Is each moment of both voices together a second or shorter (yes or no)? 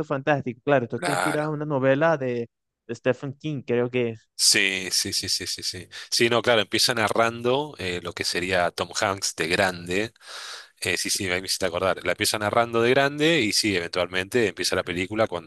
yes